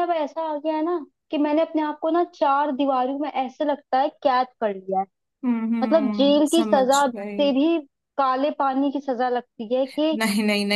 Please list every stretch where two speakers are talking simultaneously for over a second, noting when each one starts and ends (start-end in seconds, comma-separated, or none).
5.8-7.5